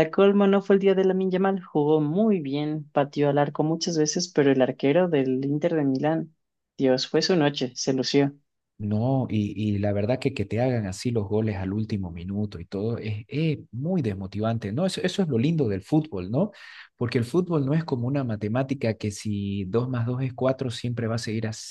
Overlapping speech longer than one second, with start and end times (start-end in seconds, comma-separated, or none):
none